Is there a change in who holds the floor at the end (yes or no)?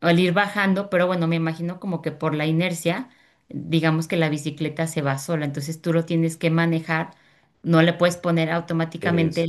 no